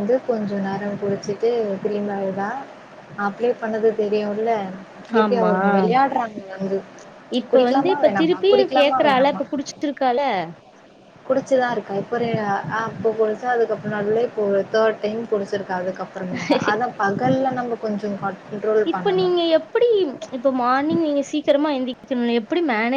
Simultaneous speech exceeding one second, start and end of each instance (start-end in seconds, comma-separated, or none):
7.5-9.4